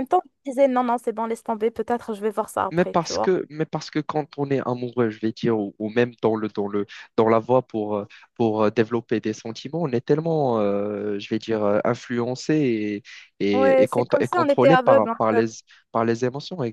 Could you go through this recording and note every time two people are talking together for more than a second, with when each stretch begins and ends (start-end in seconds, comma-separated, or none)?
13.5-15.5